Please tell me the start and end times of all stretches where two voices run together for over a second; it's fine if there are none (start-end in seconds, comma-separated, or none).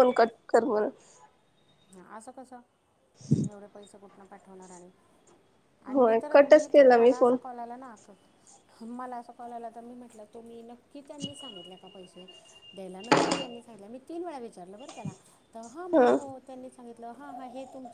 5.9-7.4